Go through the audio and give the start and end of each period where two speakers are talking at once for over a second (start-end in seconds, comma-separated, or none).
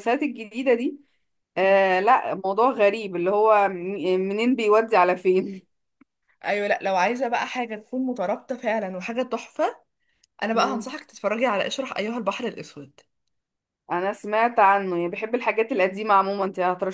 none